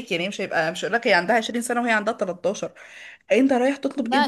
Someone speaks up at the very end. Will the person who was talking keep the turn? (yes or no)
yes